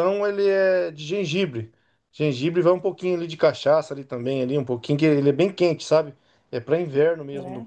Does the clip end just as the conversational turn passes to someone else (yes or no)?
no